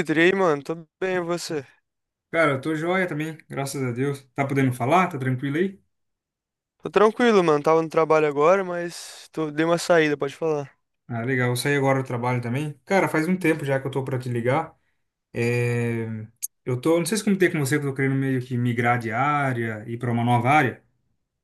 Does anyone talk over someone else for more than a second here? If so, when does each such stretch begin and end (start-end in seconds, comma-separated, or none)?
none